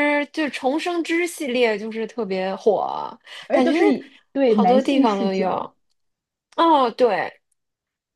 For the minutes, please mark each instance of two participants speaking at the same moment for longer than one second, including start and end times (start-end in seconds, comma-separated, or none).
4.5-5.7